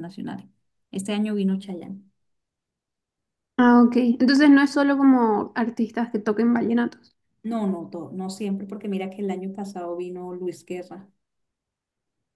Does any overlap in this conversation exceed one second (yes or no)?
no